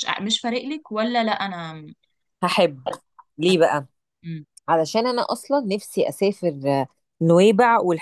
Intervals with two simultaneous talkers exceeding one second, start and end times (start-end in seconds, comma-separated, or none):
none